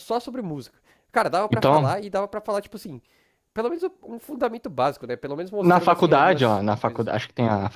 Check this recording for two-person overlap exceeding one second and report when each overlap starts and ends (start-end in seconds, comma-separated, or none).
5.6-7.1